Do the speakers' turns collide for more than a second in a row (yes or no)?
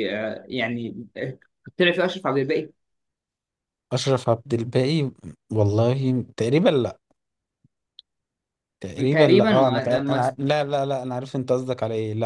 yes